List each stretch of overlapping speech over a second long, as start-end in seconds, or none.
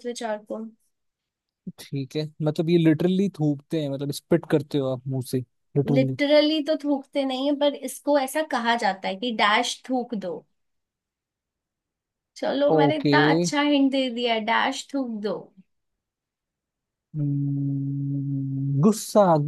none